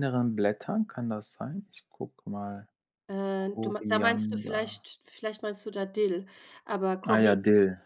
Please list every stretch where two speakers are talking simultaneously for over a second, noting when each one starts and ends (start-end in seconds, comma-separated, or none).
3.4-4.8